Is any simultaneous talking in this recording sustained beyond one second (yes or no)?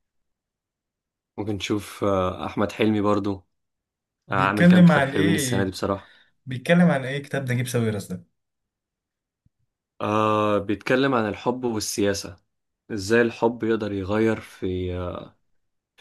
yes